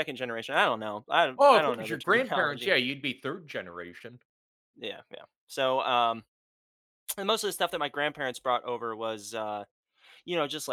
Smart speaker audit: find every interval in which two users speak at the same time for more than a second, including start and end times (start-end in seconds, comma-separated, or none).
1.4-2.7